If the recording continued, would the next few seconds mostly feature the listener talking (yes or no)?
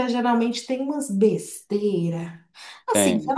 no